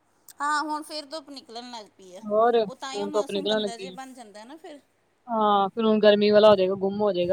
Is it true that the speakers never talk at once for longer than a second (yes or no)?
no